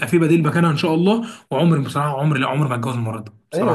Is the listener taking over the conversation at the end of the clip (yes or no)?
yes